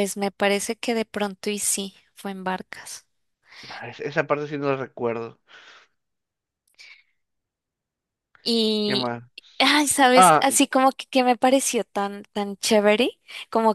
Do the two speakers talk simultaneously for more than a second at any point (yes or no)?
no